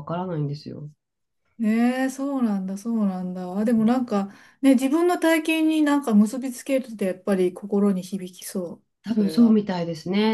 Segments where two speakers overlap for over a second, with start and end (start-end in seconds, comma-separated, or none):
none